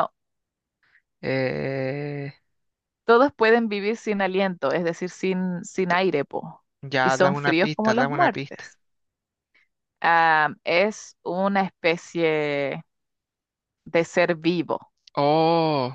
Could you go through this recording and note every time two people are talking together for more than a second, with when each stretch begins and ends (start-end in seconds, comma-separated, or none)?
7.0-8.6